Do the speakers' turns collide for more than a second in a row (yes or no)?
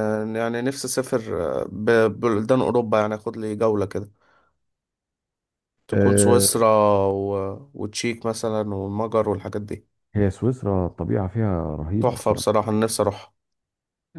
no